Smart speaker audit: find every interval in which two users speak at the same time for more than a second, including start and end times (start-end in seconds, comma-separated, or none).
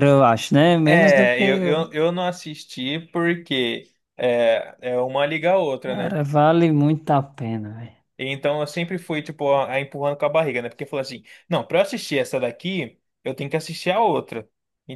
none